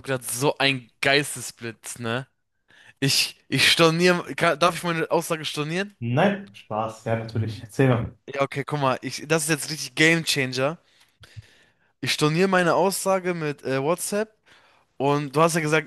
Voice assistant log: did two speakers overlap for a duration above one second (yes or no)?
no